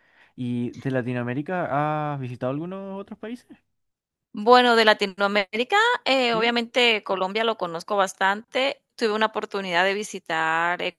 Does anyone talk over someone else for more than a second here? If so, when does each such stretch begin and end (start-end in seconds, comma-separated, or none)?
none